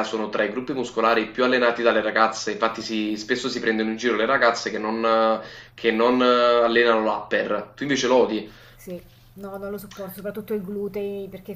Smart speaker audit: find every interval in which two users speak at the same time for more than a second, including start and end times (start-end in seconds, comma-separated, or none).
none